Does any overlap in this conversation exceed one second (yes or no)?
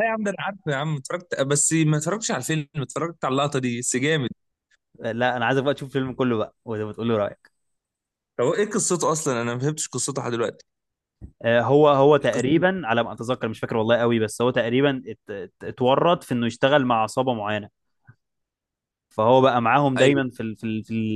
no